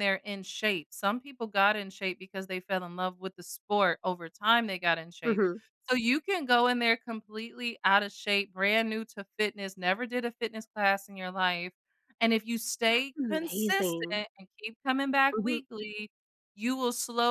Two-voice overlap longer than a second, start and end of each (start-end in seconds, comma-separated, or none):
12.9-14.2